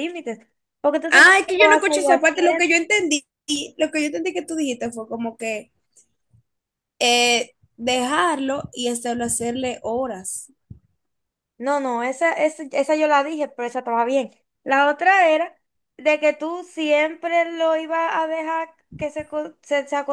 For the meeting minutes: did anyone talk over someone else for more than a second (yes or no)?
yes